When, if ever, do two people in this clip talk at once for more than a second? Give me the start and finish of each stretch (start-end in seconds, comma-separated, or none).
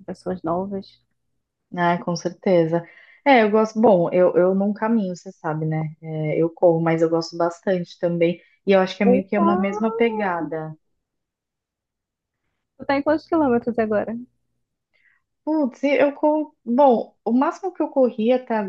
9.1-10.3